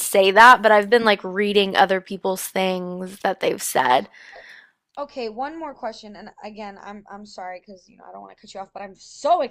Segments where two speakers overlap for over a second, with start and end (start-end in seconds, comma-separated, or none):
none